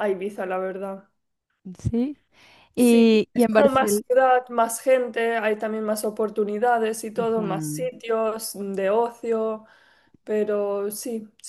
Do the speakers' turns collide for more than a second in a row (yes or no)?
yes